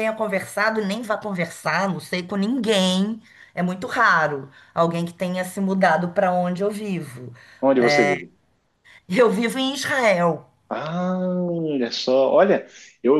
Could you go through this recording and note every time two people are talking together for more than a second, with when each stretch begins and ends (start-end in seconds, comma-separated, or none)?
none